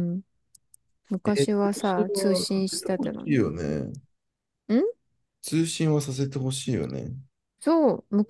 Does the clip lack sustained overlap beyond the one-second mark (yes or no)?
no